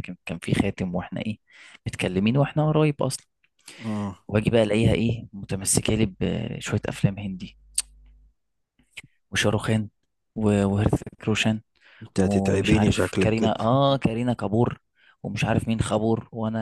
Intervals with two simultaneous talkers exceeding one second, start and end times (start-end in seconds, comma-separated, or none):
12.2-13.6